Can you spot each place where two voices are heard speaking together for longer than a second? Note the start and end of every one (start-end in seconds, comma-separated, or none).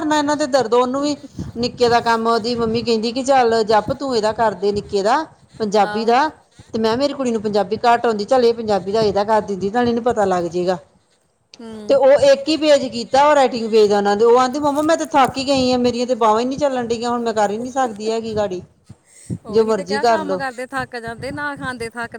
none